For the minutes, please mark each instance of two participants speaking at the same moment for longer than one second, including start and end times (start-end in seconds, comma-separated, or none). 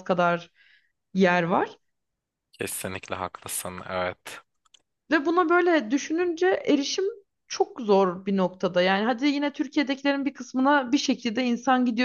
none